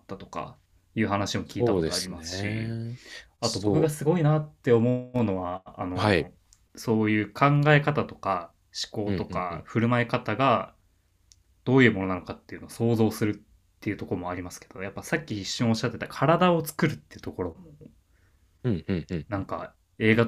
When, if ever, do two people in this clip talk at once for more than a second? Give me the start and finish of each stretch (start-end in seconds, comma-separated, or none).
1.4-2.8